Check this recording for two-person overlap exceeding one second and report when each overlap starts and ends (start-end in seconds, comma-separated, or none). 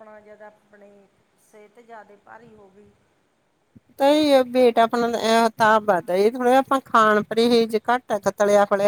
none